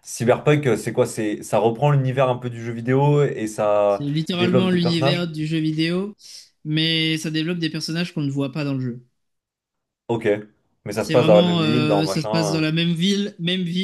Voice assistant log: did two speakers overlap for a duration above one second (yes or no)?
yes